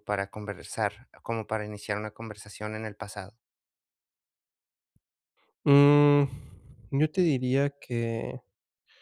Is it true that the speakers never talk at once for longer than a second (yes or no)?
yes